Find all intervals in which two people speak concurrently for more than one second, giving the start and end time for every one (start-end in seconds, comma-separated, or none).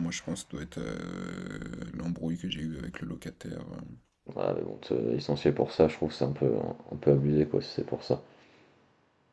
none